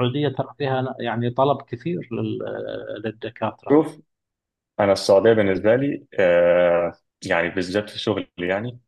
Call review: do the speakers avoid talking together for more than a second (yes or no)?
yes